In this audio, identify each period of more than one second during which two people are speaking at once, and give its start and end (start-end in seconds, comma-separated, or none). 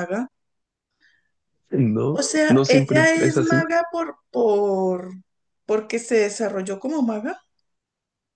2.1-3.6